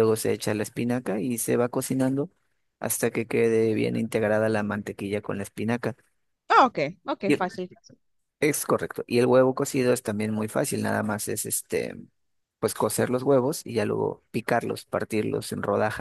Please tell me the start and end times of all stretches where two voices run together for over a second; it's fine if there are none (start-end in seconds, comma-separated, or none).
none